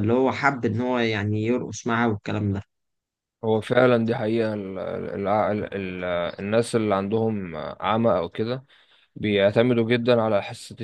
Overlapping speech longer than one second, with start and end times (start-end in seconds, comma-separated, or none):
none